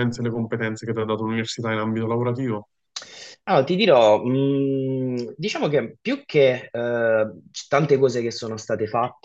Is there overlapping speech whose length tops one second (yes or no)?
no